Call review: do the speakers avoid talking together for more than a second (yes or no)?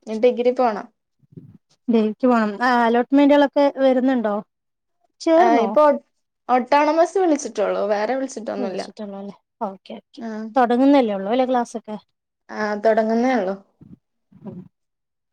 yes